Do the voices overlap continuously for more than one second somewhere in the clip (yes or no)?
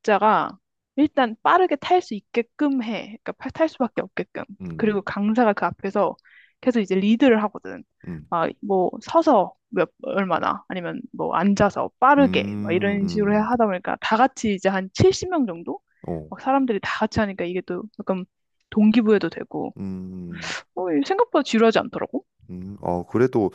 yes